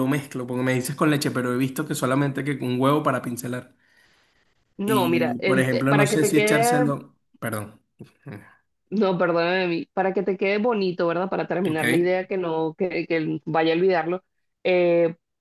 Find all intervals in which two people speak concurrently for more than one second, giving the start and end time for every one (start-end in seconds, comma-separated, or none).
4.8-6.9